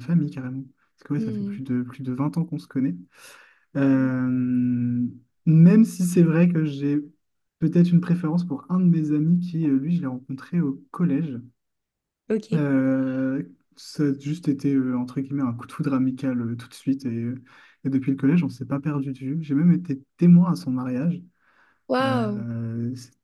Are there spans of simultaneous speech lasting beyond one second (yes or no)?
no